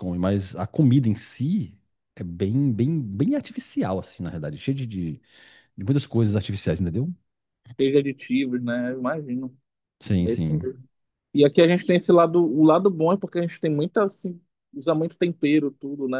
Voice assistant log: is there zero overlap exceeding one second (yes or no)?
yes